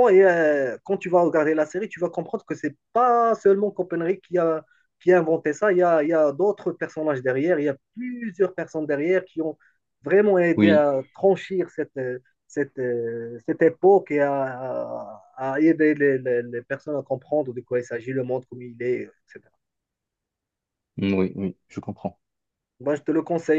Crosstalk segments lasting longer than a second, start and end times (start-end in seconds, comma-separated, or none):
none